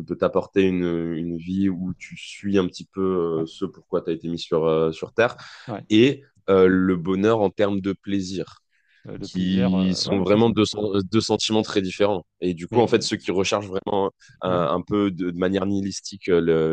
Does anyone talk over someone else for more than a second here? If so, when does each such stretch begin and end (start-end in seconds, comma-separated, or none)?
9.2-10.5